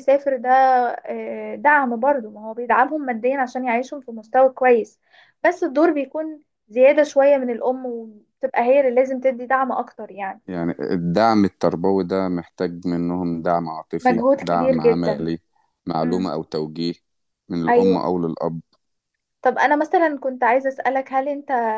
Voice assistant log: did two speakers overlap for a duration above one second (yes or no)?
yes